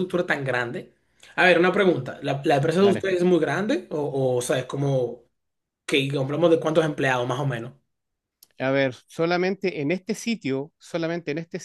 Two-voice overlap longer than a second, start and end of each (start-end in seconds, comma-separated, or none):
none